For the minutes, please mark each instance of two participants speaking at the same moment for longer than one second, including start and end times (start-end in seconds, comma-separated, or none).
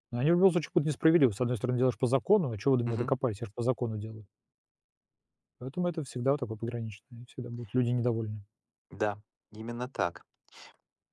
none